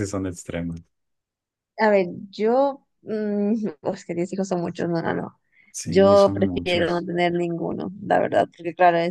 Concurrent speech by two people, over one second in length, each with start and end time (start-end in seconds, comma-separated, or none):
5.8-7.1